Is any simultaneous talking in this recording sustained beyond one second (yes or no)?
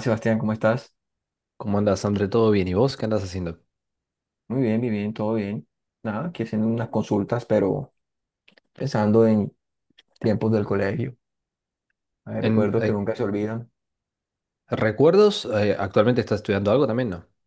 no